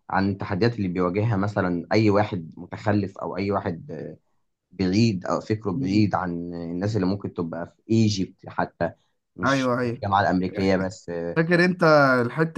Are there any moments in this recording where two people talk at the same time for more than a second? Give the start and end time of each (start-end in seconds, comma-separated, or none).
none